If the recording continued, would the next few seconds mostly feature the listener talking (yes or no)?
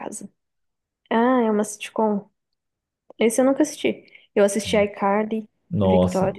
yes